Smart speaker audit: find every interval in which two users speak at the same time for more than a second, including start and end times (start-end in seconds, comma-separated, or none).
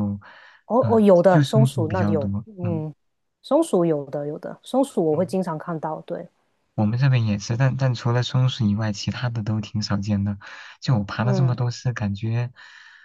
0.8-2.8